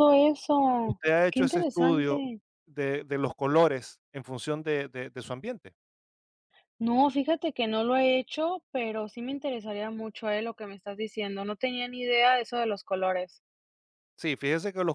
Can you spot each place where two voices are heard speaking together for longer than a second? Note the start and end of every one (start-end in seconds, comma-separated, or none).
0.8-2.2